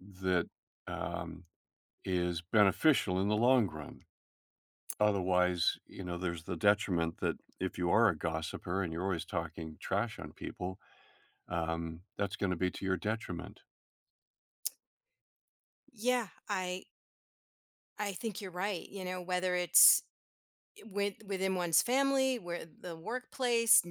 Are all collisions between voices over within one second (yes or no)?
yes